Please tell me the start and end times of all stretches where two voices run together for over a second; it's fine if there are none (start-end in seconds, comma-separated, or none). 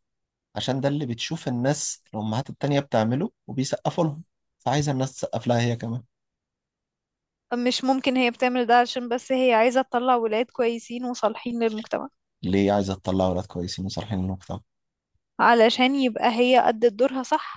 none